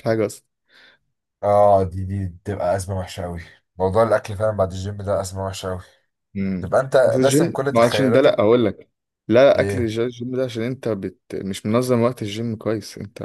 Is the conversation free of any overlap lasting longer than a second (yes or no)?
no